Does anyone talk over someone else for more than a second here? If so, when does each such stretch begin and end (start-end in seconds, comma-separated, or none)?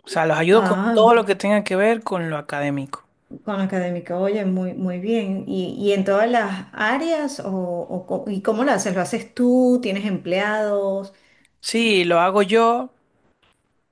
none